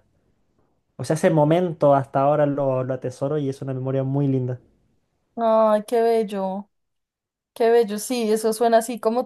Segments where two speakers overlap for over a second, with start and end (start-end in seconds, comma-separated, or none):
none